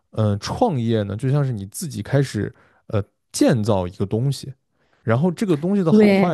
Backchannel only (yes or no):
yes